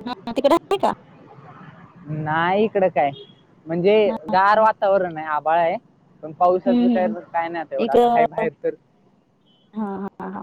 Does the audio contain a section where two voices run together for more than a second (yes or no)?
no